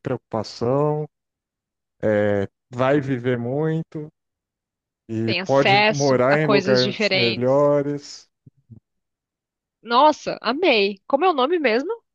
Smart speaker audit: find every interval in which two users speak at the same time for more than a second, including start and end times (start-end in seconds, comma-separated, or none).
5.2-7.7